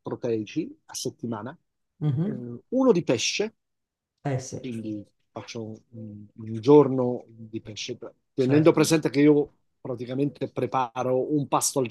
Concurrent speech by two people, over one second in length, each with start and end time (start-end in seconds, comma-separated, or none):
none